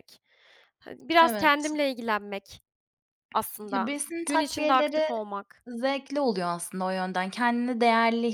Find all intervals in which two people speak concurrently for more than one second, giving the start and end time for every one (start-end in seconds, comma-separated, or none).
3.7-5.0